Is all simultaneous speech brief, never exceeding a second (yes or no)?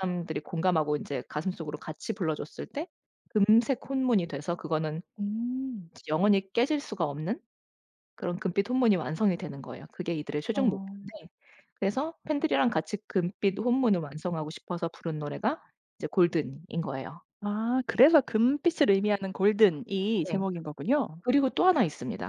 yes